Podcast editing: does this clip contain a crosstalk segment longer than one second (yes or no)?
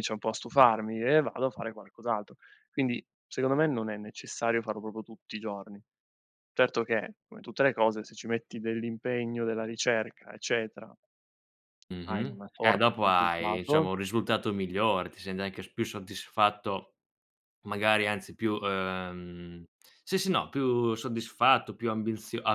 yes